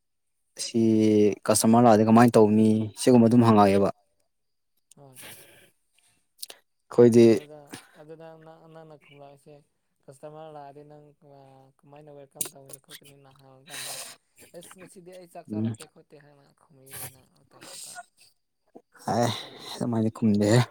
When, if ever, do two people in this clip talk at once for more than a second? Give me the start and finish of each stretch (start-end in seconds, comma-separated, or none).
none